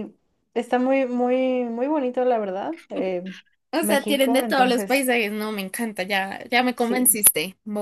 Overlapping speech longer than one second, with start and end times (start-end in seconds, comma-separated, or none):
3.8-5.1